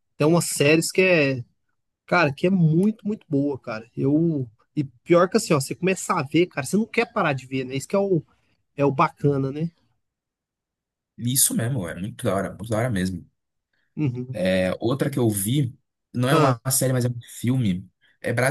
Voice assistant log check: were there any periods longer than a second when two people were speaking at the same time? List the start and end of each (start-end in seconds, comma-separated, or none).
none